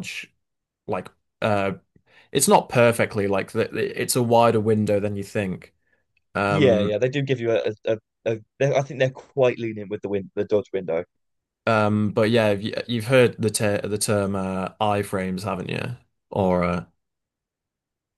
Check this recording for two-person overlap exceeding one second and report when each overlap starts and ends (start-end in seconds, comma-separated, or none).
none